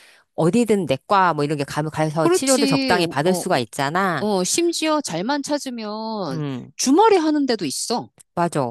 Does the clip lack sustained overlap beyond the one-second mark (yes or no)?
no